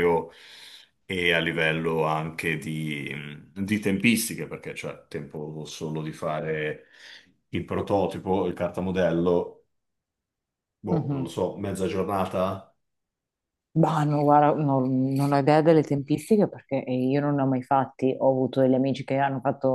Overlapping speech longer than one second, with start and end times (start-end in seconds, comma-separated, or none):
none